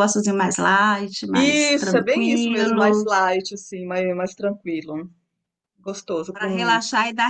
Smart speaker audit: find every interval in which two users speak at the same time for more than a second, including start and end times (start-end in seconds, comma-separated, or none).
1.3-3.1